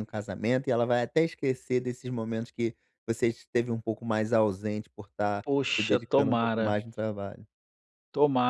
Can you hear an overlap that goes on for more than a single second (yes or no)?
yes